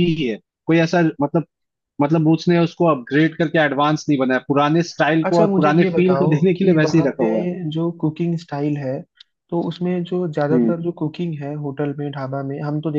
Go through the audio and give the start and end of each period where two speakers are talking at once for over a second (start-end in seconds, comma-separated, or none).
5.2-7.2